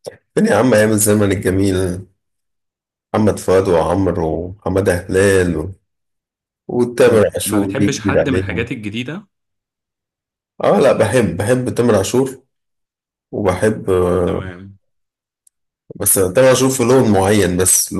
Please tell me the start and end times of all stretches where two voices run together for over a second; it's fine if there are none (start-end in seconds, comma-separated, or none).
7.0-8.7